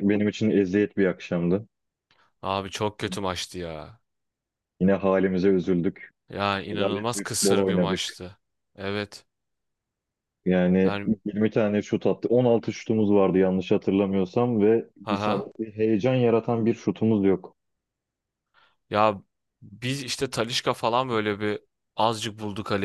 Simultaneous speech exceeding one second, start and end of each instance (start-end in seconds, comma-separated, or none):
6.7-8.2